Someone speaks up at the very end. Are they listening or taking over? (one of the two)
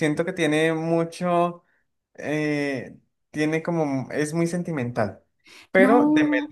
listening